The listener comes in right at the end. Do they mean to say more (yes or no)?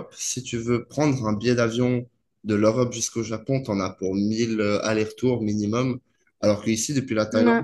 no